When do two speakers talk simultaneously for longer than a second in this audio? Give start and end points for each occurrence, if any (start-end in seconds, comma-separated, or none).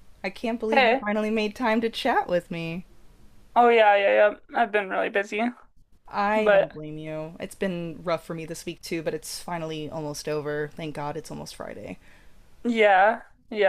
none